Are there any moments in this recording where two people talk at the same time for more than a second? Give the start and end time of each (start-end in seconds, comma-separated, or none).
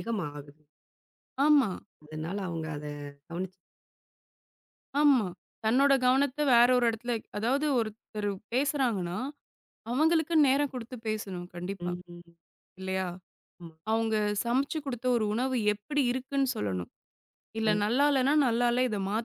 none